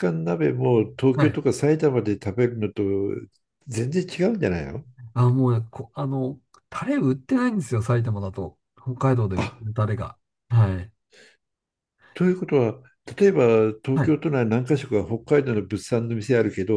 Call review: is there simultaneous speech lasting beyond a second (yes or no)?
no